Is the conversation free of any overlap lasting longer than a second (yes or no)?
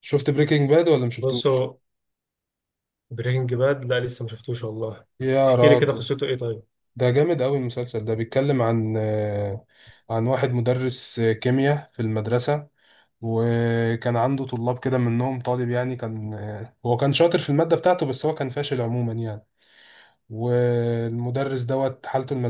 yes